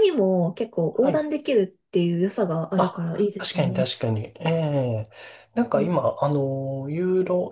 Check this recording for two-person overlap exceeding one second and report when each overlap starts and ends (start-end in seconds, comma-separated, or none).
2.8-4.0